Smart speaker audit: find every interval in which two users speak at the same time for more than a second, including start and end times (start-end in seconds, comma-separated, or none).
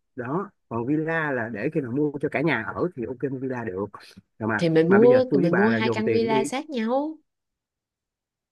4.6-6.4